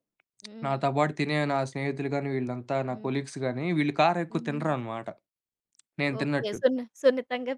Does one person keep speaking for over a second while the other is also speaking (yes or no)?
no